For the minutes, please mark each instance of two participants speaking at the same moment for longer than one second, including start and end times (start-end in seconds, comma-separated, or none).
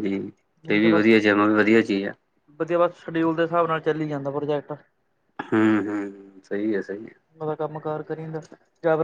none